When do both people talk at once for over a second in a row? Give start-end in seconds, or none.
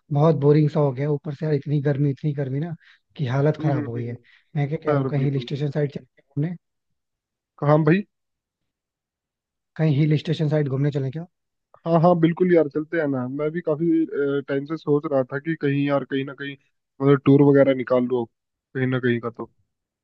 none